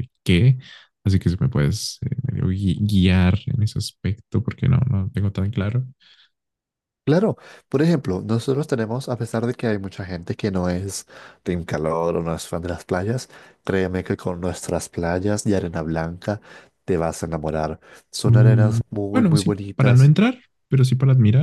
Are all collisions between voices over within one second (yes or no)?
no